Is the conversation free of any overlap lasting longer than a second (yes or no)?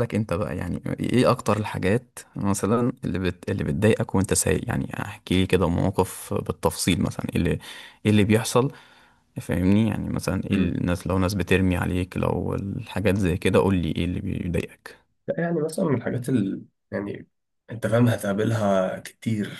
yes